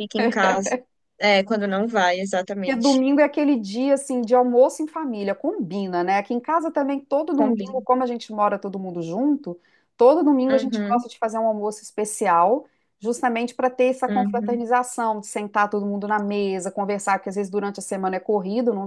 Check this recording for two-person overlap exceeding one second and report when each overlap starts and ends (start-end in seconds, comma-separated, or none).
none